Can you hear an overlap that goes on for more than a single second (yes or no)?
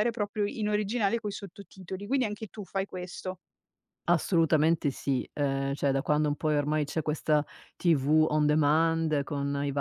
no